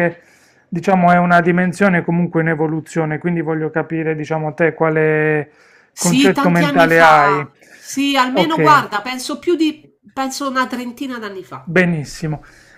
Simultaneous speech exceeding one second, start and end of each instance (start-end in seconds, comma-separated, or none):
6.0-7.4